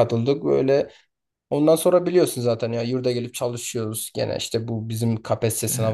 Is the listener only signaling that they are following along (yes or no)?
yes